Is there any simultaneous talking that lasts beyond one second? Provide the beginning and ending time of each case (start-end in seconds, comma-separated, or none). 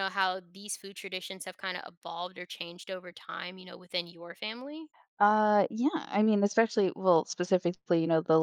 none